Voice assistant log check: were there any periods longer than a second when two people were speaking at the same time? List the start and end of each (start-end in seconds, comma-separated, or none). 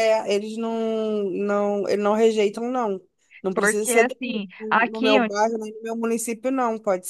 3.5-5.3